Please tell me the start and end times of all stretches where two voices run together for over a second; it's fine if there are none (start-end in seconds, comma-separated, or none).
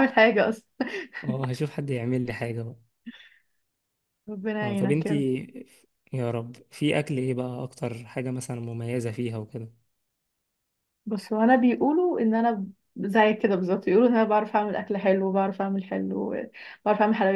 none